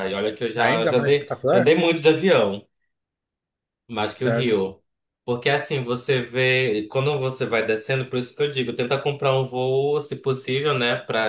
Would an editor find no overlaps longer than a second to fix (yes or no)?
no